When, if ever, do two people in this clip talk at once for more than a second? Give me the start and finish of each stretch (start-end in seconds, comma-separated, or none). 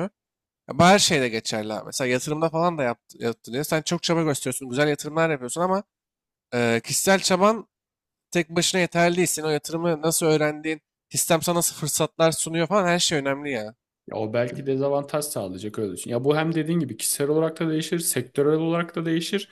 none